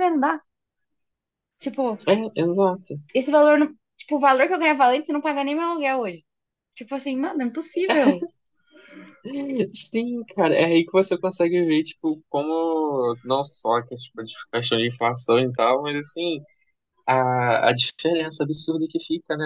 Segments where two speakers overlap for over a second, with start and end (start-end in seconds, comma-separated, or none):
none